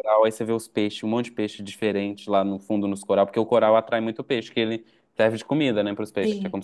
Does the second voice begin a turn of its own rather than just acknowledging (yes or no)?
yes